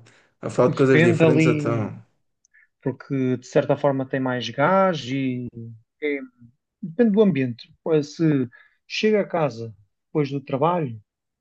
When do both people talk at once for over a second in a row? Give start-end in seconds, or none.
0.7-1.9